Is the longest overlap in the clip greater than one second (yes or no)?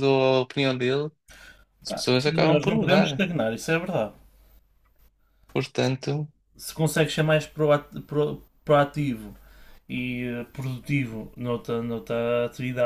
yes